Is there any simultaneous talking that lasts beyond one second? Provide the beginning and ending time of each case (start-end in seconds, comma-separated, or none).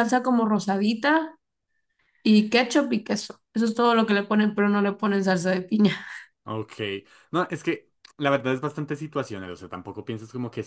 none